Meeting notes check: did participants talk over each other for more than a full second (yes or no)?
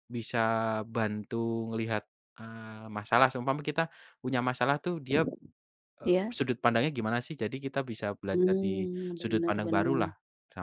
yes